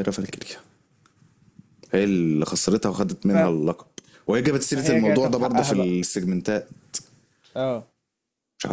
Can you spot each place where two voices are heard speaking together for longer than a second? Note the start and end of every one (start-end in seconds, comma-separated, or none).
4.7-6.0